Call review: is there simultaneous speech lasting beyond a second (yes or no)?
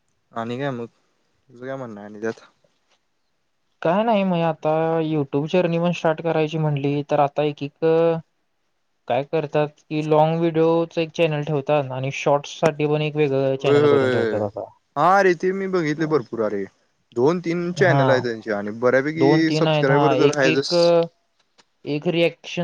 yes